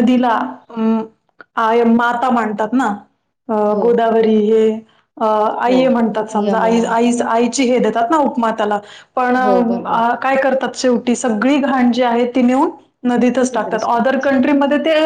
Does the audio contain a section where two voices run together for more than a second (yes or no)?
no